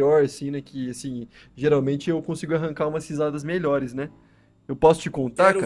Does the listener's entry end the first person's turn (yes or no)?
yes